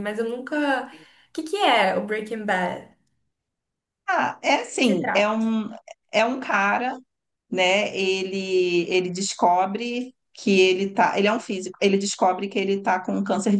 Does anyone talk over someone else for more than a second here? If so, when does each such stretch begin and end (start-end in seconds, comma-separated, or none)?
none